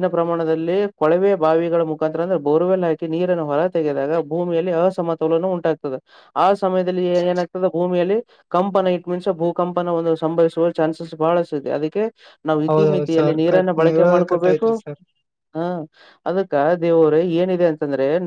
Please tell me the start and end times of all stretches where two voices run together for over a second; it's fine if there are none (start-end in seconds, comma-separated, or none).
12.7-14.7